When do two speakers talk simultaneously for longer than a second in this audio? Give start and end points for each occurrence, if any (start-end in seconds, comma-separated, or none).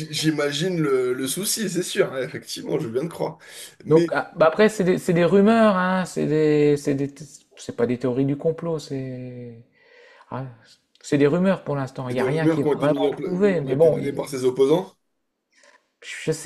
12.1-14.2